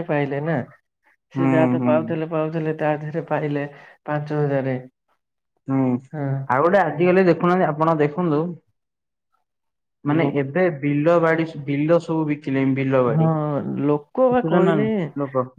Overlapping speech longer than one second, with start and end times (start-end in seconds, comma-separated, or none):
13.1-14.8